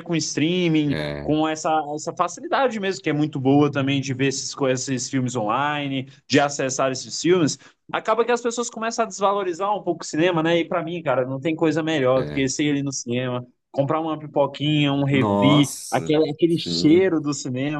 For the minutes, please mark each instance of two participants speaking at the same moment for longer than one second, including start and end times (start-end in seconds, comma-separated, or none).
15.1-17.2